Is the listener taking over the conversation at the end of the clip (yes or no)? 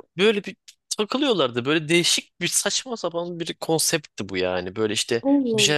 no